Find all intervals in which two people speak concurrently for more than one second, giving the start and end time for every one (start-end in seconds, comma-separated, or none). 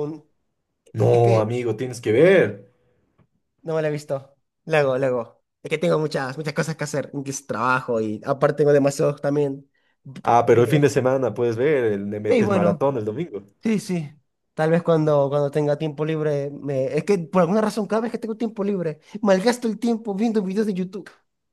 none